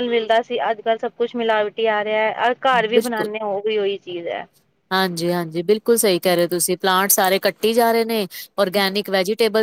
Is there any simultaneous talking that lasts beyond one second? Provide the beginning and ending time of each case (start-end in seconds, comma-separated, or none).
none